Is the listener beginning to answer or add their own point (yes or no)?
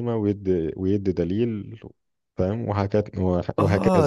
yes